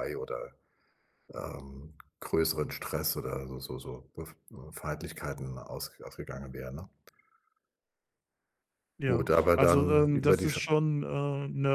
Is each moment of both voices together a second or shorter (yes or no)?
no